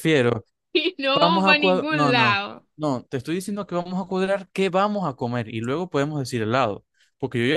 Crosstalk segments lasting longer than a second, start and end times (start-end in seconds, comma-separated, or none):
1.1-2.7